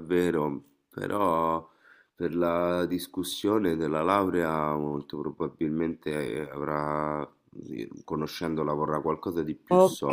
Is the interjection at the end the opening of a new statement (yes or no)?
yes